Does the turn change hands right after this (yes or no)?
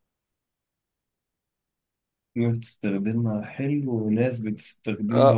yes